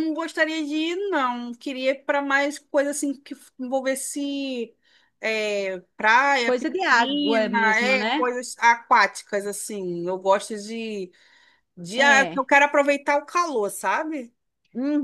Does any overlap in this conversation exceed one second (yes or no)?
yes